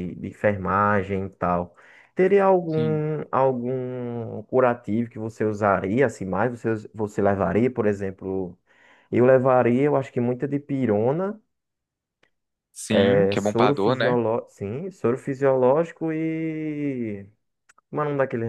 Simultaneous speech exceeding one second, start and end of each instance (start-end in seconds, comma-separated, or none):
12.9-14.2